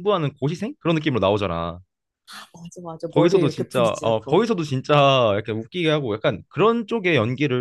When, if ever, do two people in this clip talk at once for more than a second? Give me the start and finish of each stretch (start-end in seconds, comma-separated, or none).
3.1-4.4